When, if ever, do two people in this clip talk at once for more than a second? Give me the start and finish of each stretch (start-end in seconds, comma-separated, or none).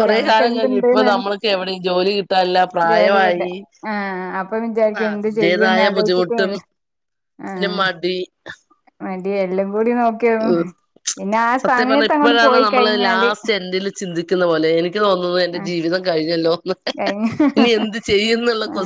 5.0-6.5